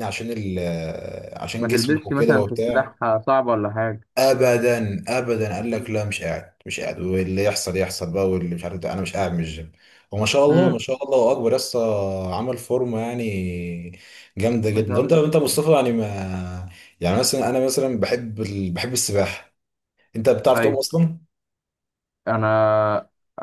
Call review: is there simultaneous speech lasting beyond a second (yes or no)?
yes